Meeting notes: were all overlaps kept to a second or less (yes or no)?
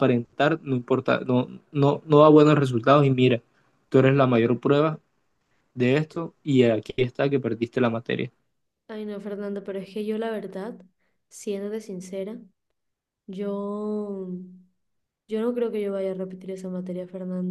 yes